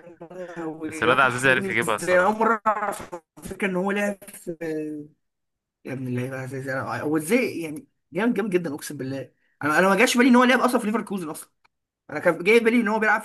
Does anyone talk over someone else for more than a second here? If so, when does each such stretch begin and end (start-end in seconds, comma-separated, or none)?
0.8-2.4